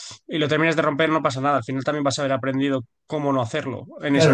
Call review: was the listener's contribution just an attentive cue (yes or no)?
no